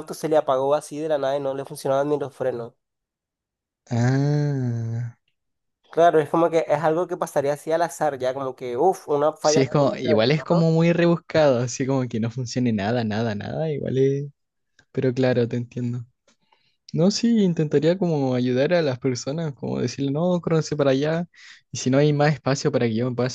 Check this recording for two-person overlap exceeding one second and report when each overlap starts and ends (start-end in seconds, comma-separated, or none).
9.4-10.7